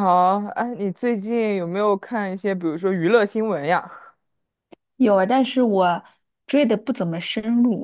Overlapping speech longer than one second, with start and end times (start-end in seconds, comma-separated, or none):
none